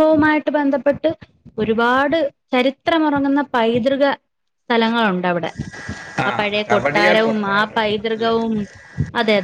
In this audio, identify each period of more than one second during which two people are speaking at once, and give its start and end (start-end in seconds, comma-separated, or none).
6.3-8.3